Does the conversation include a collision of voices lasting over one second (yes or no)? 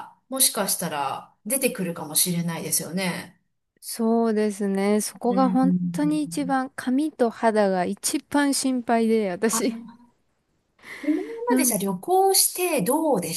no